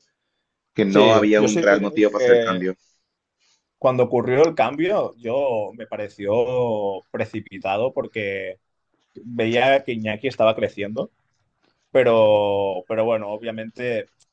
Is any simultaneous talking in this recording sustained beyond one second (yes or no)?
yes